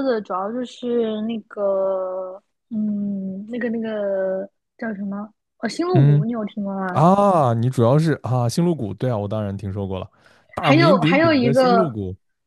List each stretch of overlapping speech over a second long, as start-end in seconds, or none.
10.6-11.9